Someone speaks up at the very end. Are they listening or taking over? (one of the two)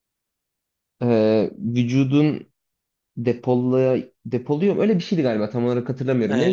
taking over